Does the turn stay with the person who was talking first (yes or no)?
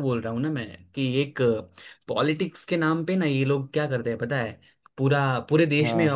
yes